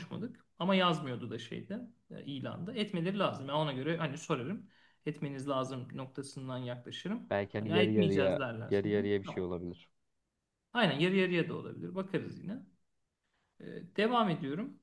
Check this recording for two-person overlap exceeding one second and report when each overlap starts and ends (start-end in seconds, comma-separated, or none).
7.3-9.4